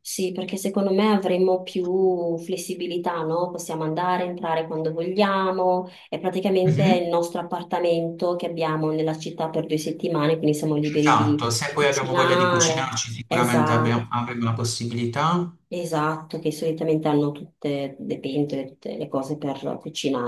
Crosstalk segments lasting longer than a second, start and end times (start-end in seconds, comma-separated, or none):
11.0-14.1